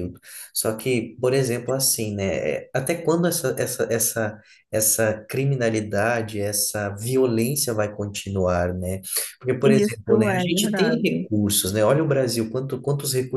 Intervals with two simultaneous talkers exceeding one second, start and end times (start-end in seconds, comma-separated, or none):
9.6-11.3